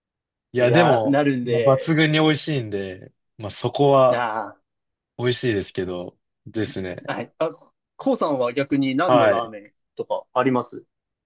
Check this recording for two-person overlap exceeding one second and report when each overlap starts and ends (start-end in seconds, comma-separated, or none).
0.6-2.0